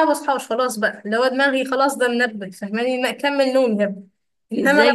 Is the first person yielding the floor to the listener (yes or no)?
yes